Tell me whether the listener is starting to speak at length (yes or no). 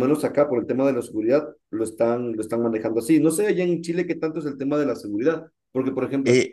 no